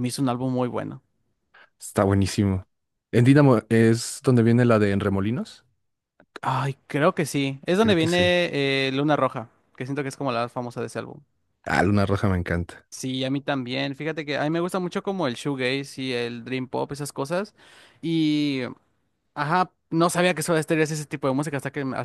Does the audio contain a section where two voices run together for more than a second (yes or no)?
no